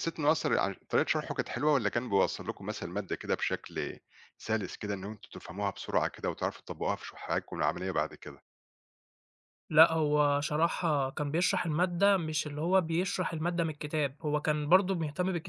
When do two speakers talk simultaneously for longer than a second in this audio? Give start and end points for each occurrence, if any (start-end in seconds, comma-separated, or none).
none